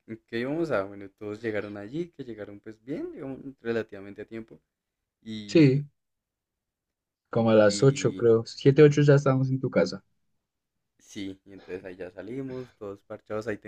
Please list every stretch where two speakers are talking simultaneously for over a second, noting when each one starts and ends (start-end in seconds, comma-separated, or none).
none